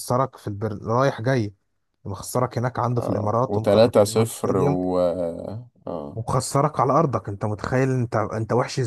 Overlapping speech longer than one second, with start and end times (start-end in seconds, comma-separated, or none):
3.0-4.8